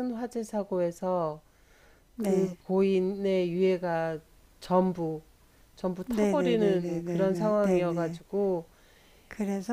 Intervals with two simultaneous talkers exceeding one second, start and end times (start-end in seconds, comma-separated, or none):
6.1-8.2